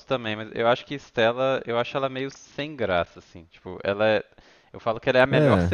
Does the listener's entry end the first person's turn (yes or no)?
no